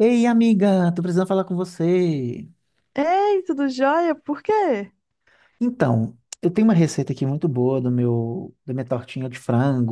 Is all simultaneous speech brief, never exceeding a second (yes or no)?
yes